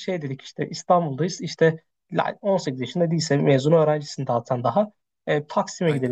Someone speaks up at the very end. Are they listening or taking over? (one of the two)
listening